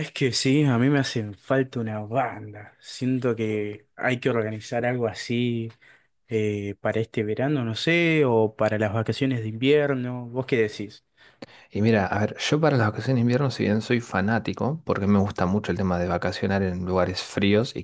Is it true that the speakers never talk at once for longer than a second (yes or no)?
yes